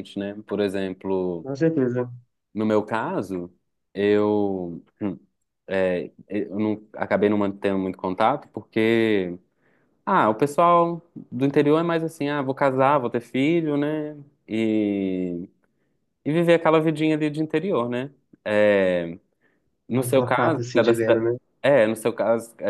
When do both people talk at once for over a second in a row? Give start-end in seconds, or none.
19.9-21.3